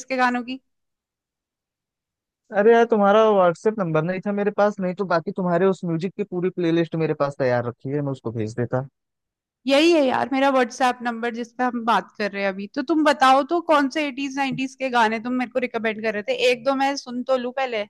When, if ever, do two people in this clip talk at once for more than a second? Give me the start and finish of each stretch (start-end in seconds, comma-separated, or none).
none